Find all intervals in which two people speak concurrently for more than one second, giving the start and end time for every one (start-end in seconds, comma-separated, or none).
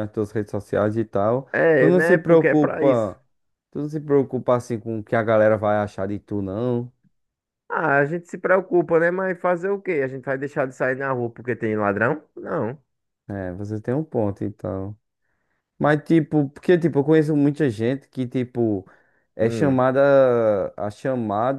1.5-3.1